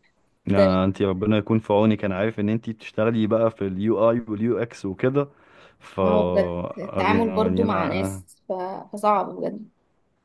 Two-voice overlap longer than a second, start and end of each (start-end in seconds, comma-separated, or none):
7.0-8.2